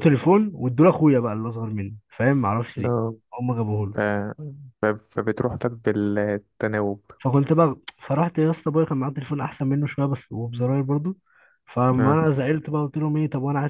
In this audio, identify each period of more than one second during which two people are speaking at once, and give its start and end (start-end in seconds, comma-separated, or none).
none